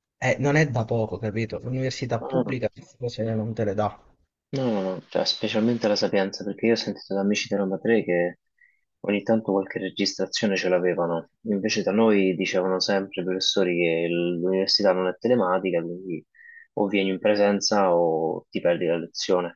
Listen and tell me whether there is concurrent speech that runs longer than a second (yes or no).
no